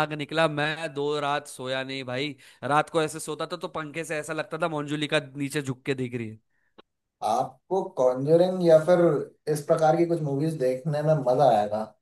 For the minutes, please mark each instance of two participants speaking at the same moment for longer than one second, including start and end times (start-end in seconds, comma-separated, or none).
none